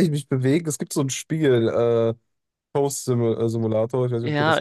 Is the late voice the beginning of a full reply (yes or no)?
yes